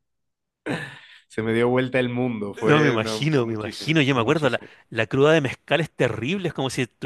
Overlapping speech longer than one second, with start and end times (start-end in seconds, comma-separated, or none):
2.6-4.7